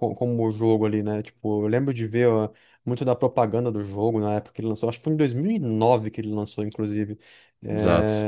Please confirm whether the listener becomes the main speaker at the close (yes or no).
no